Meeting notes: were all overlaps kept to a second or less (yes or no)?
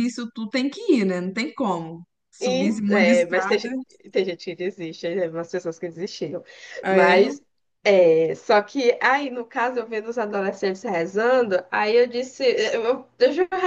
no